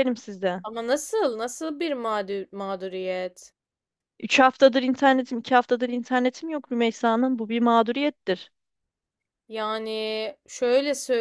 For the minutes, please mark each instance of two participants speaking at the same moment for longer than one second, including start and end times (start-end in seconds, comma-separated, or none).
none